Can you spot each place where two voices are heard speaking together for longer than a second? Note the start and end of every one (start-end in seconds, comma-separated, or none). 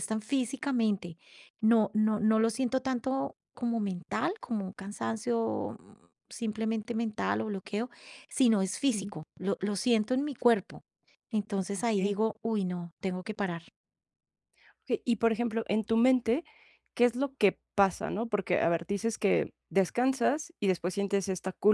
none